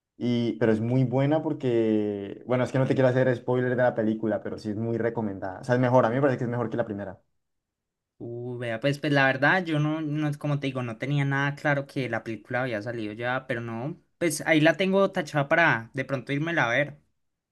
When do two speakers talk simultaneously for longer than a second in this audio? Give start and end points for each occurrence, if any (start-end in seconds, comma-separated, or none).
none